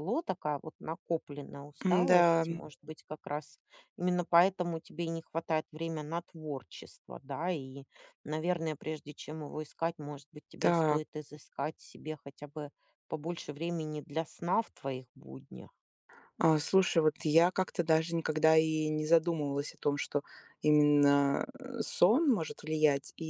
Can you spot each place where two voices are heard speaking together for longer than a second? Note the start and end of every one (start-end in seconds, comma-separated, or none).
none